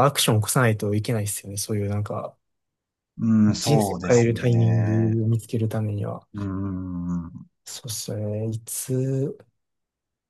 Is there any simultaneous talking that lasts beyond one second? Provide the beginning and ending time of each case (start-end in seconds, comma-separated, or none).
3.6-5.2